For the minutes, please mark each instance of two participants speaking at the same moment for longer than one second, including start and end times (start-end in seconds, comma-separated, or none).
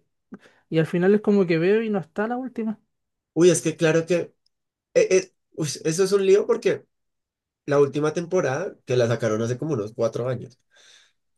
none